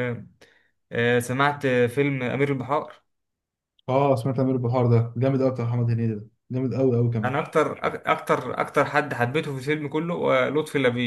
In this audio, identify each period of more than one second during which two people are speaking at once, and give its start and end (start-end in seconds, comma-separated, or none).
none